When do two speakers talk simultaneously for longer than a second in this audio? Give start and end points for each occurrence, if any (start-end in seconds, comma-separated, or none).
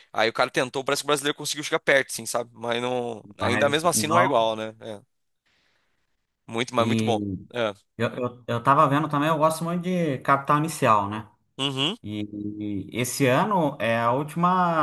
3.2-4.5